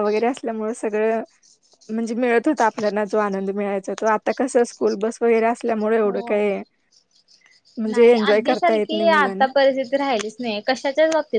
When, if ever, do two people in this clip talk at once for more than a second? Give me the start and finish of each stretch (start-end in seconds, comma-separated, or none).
7.9-9.5